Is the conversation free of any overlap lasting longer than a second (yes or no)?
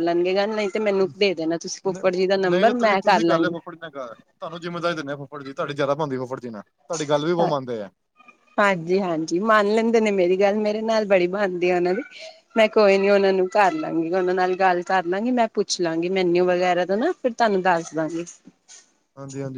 no